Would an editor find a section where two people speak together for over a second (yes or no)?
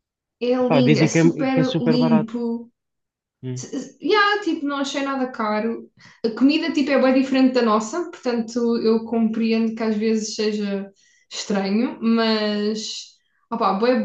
yes